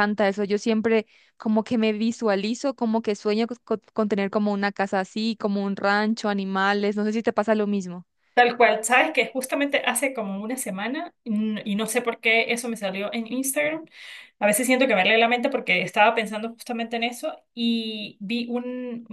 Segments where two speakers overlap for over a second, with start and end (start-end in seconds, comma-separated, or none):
none